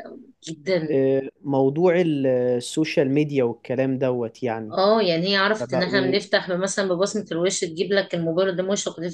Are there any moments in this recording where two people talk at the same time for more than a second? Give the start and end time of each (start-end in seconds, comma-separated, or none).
none